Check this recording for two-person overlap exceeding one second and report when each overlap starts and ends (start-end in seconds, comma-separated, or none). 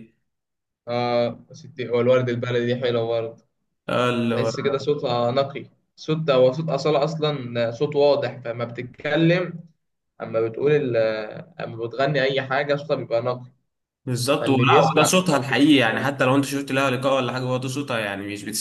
14.4-16.3